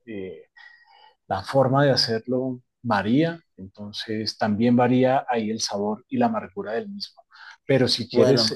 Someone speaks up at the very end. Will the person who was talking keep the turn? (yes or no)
yes